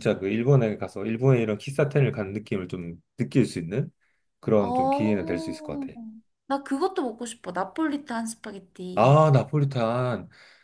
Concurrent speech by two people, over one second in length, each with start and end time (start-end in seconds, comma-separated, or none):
4.6-5.9